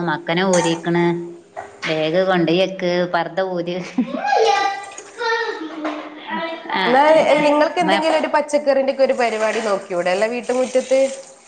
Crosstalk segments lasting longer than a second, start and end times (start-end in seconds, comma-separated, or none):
none